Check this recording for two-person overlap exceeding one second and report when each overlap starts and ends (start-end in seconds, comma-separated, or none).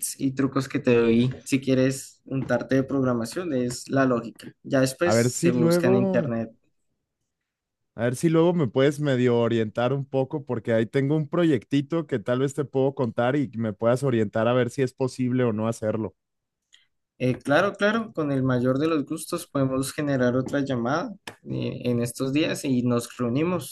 5.0-6.3